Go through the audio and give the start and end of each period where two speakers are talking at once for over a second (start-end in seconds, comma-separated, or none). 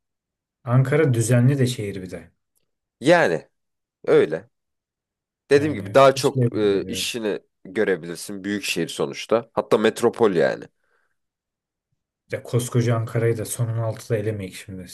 5.5-7.2